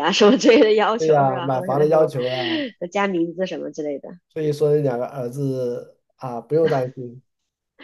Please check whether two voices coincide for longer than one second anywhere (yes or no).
yes